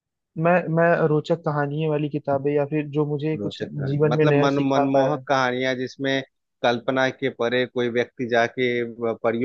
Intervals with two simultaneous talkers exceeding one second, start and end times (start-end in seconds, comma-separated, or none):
3.4-5.2